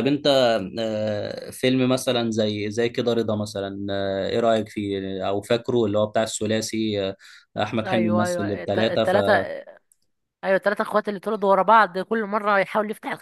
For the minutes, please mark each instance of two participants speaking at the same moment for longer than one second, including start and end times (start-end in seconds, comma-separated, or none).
7.8-9.2